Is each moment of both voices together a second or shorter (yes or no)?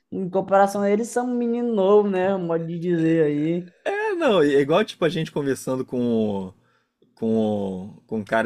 yes